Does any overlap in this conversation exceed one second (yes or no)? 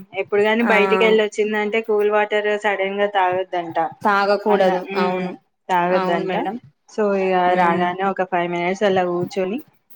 no